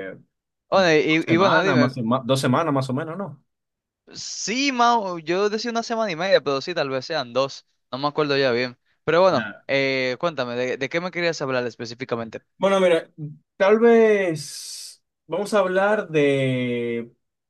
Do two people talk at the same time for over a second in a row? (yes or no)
yes